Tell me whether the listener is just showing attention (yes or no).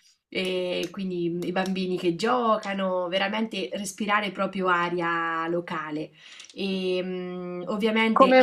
no